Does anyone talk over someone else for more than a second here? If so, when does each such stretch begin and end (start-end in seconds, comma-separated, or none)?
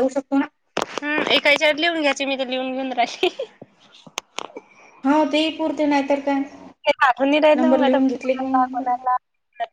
7.6-8.9